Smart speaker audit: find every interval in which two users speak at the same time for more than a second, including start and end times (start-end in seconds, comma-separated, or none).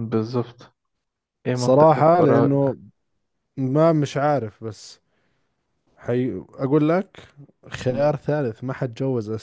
1.5-2.8